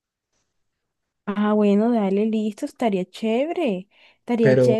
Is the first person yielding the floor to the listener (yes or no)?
no